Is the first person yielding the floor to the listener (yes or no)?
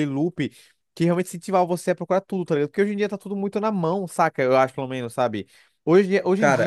no